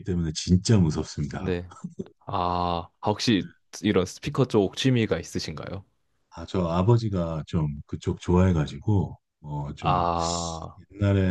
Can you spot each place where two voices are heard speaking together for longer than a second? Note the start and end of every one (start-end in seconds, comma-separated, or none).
none